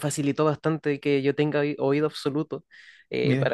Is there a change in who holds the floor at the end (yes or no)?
no